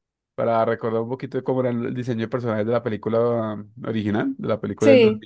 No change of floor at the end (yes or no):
yes